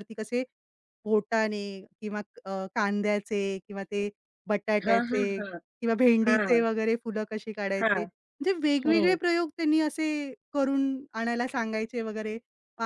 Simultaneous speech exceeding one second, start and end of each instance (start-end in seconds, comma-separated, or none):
none